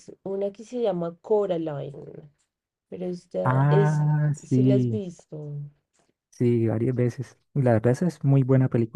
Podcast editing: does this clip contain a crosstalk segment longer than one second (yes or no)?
yes